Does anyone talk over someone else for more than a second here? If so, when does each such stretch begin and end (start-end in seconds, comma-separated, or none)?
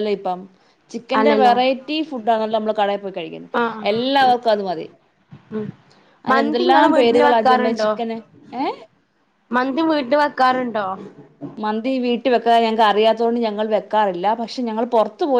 6.3-7.9